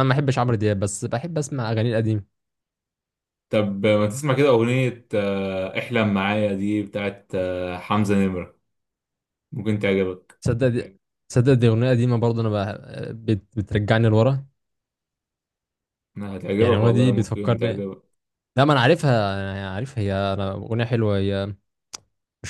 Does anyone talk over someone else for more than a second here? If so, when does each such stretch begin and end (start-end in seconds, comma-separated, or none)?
16.6-17.9